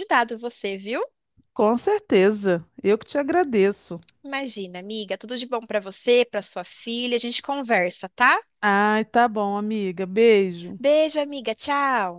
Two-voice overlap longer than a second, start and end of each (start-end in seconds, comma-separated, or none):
none